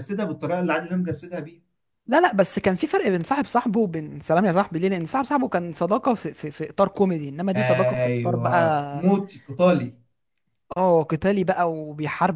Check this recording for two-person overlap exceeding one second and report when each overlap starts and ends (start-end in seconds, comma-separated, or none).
7.5-9.1